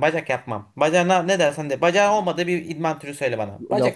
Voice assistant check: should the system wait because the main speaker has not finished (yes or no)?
no